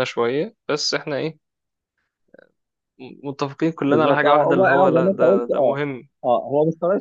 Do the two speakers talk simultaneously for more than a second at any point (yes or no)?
yes